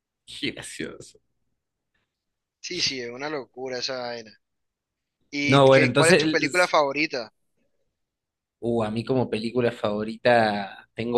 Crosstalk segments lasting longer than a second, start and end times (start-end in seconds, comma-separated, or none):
5.4-6.8